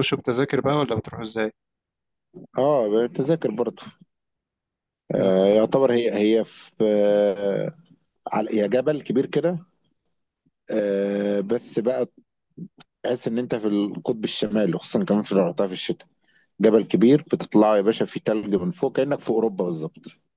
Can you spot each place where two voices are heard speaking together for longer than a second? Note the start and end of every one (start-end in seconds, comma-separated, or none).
none